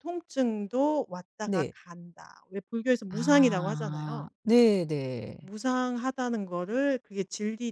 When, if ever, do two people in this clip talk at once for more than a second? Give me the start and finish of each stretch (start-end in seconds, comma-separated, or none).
3.1-4.3